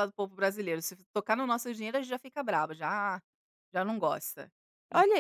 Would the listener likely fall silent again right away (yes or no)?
no